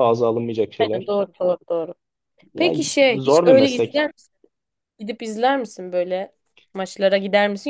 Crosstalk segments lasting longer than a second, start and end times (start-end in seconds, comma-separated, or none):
2.5-4.1